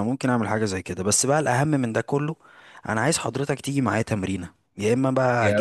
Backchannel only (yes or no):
yes